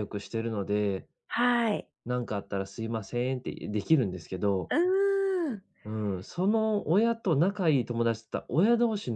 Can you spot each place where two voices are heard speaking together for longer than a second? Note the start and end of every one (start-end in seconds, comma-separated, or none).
none